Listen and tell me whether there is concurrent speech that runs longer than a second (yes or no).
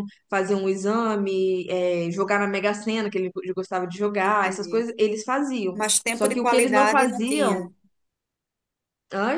yes